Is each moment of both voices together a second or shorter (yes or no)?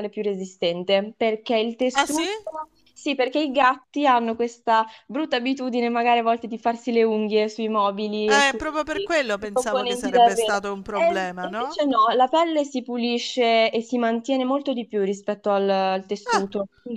no